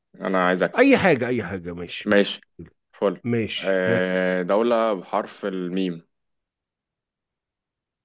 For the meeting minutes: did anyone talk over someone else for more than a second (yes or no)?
no